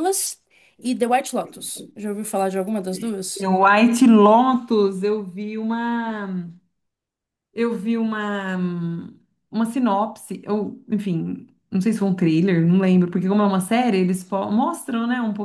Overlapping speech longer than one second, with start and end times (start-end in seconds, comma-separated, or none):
none